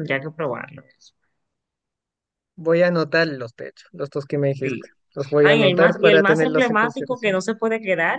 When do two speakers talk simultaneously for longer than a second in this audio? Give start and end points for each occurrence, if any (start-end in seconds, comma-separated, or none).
5.4-7.4